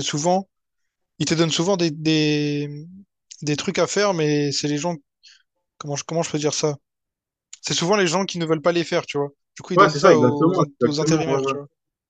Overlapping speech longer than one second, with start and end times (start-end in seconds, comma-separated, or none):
9.8-11.5